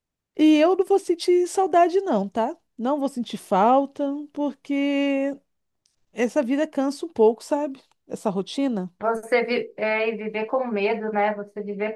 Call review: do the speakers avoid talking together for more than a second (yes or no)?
yes